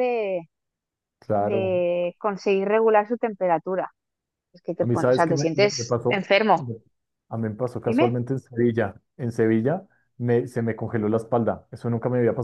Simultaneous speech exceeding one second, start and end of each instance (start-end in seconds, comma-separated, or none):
4.8-6.7